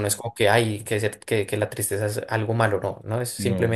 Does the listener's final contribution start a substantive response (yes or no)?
no